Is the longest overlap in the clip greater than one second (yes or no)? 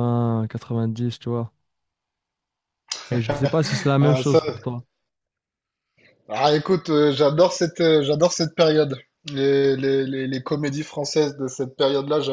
no